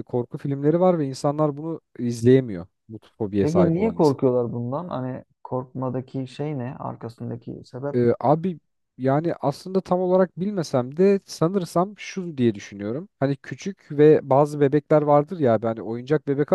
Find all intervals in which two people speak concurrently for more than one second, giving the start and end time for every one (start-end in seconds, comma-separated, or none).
none